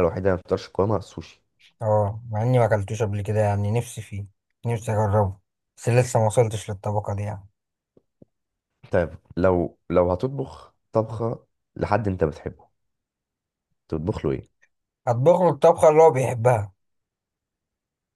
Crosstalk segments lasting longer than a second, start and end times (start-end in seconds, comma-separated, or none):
none